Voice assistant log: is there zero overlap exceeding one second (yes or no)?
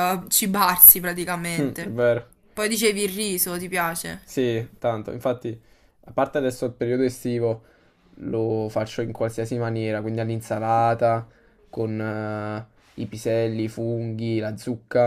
yes